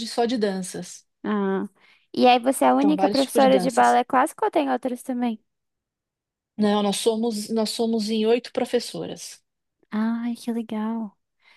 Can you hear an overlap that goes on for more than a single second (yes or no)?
yes